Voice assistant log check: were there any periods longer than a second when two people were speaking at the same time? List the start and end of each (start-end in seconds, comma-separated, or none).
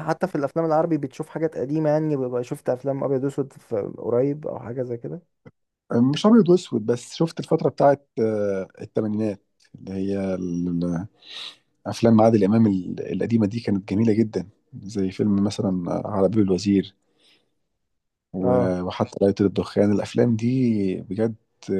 none